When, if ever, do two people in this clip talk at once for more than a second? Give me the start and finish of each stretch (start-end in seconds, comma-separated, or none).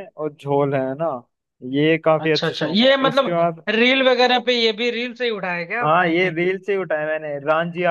2.2-3.6